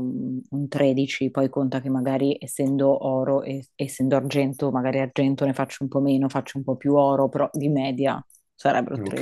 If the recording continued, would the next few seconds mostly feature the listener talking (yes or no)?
yes